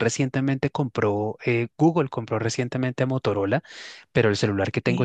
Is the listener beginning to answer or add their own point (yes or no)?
no